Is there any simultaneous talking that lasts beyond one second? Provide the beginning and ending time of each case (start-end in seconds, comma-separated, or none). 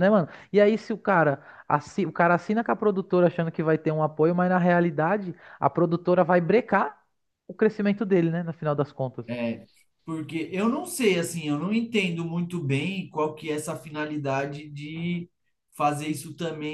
none